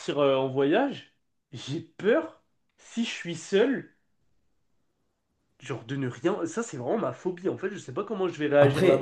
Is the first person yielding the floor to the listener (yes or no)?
yes